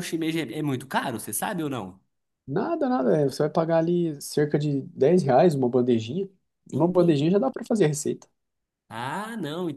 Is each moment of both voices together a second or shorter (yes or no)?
yes